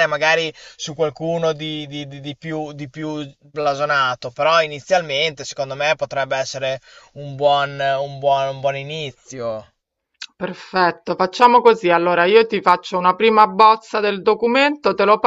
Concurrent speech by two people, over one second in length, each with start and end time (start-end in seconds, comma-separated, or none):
none